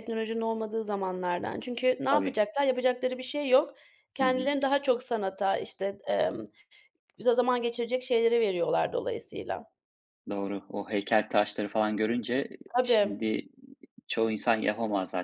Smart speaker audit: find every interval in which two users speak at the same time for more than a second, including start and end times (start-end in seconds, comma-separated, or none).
none